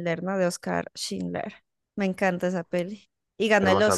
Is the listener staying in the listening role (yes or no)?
no